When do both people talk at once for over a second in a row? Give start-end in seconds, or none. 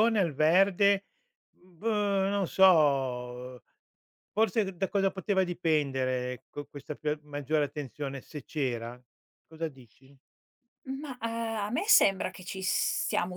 none